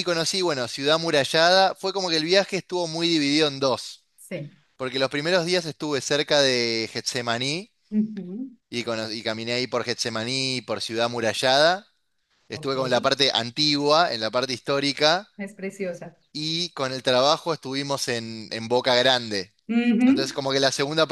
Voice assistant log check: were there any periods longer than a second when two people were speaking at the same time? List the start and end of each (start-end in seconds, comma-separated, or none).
none